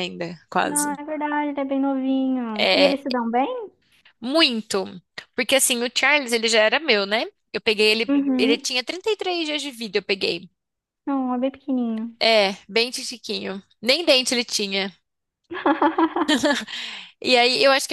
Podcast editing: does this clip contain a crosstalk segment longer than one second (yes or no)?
no